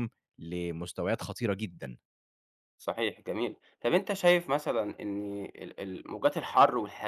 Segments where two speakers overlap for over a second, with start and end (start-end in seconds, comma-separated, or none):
none